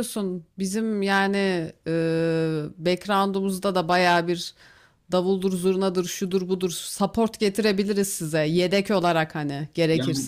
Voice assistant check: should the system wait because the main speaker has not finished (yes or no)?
no